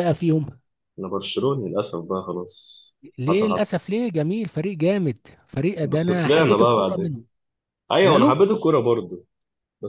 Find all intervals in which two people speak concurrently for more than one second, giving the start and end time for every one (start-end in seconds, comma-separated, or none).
5.8-7.1